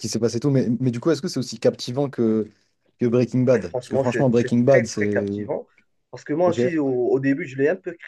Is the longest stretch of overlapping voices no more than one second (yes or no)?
no